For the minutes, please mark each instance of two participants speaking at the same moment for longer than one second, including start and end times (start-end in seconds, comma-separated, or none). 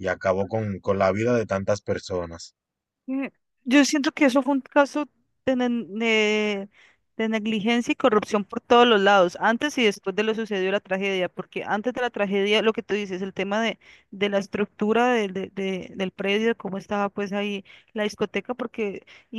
none